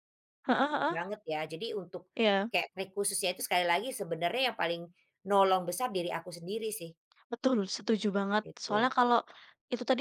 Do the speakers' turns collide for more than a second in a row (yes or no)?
no